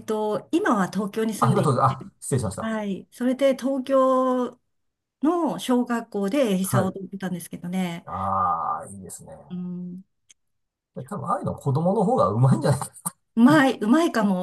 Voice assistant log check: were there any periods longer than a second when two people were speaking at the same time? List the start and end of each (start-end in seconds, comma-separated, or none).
none